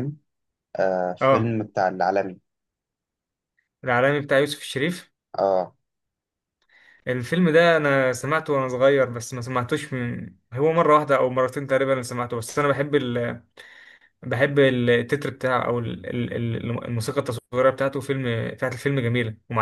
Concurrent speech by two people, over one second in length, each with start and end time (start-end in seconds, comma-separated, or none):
none